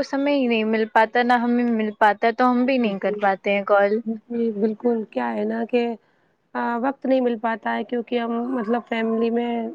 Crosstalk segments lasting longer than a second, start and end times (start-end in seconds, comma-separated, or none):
none